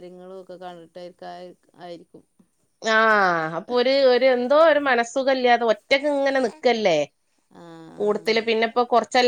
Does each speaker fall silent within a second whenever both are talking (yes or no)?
yes